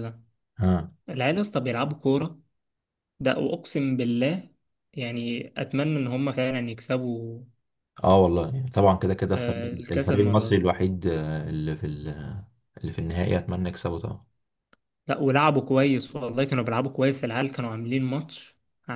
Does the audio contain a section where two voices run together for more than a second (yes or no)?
yes